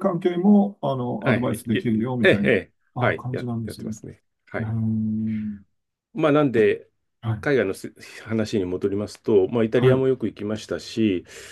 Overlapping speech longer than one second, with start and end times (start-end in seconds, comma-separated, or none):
1.2-4.0